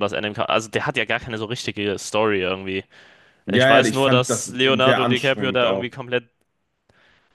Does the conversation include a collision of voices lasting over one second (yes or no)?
yes